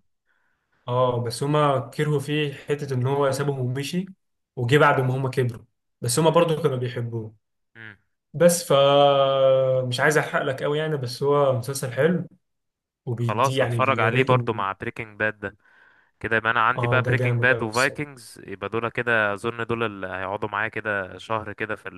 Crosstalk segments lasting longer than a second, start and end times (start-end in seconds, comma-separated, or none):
13.2-14.6, 16.8-18.1